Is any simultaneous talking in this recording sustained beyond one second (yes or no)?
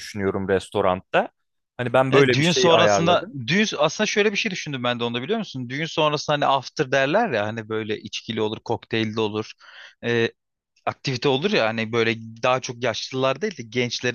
yes